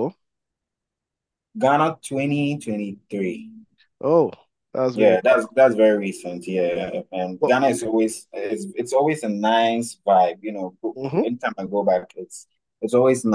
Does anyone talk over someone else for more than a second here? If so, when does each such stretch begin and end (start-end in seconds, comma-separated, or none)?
none